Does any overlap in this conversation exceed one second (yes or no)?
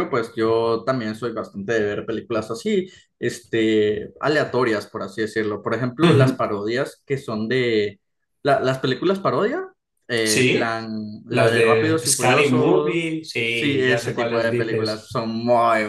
yes